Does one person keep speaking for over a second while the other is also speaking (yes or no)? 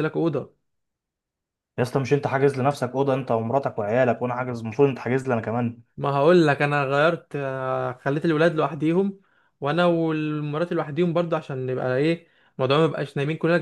no